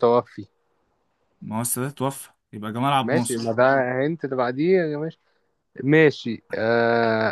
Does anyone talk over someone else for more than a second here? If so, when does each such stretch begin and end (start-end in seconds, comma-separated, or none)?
none